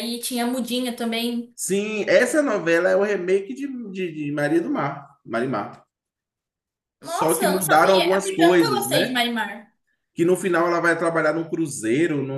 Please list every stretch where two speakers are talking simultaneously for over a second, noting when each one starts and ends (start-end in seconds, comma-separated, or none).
7.0-9.2